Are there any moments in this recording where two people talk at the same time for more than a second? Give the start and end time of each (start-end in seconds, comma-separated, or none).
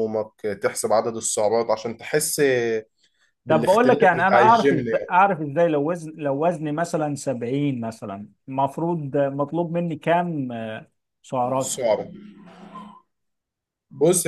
3.5-5.2